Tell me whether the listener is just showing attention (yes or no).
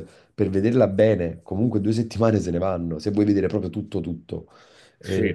yes